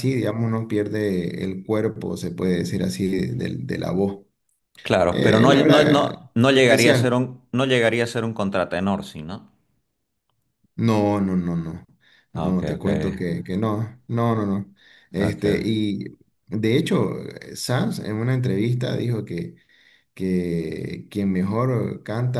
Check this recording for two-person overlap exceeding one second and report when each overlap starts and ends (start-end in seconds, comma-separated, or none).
5.1-7.2